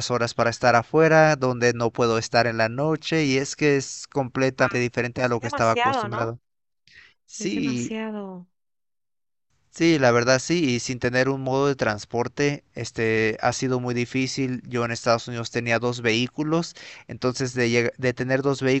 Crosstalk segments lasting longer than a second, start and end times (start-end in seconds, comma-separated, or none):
4.6-6.3